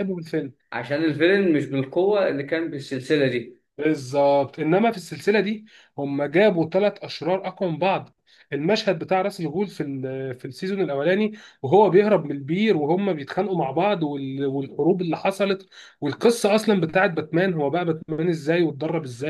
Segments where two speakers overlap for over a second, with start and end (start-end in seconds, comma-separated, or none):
none